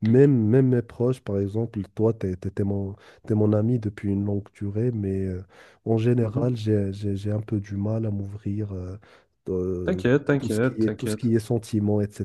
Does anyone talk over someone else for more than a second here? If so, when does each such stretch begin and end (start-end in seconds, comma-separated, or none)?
9.8-11.3